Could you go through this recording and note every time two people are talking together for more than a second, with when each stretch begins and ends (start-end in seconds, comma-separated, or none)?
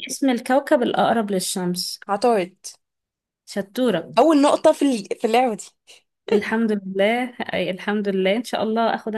none